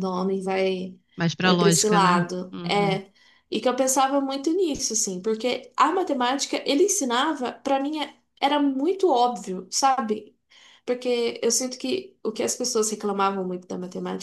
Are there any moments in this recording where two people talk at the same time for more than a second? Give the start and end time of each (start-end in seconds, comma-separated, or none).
1.4-3.0